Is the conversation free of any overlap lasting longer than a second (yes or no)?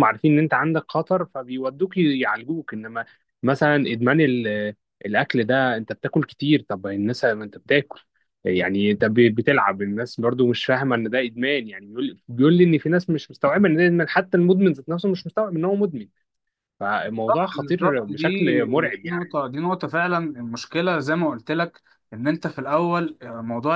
no